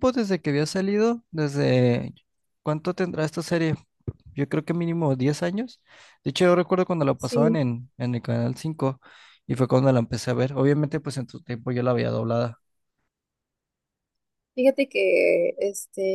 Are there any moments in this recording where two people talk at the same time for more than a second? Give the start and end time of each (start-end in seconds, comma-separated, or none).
none